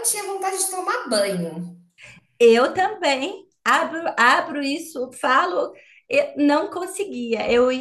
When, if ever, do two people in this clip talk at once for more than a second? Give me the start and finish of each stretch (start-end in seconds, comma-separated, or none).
none